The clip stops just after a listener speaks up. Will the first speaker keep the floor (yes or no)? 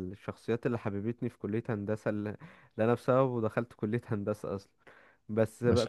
yes